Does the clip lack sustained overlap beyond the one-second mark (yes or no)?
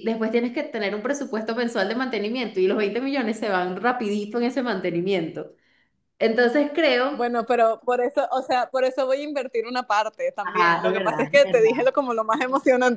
no